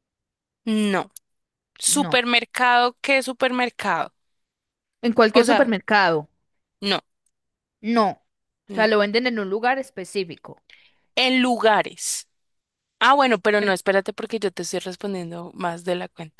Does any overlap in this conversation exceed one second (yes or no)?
no